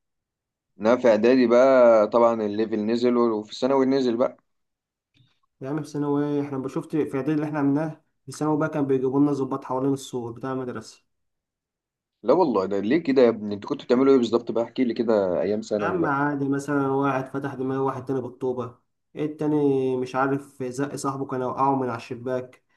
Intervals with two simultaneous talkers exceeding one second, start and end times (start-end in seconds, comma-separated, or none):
none